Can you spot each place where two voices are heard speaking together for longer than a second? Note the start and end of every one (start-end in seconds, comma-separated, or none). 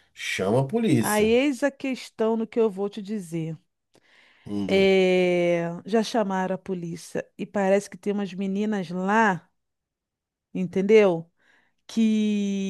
none